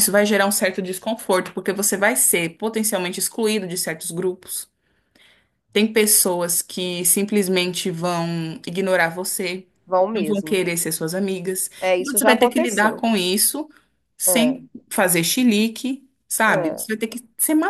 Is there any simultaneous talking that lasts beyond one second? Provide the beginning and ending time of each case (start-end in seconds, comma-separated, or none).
11.8-13.0